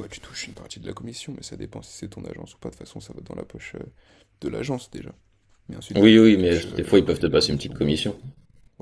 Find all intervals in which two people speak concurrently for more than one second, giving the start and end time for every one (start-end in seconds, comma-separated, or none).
5.9-7.9